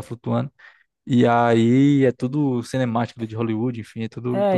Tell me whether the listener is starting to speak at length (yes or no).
yes